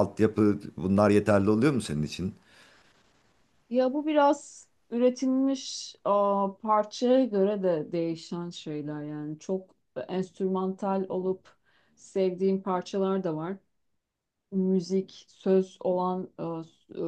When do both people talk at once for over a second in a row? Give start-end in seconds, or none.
none